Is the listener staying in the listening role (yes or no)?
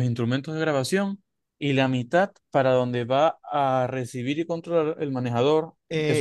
no